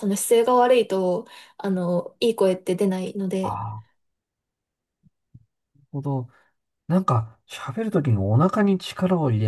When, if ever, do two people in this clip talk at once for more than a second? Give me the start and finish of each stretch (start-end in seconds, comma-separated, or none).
none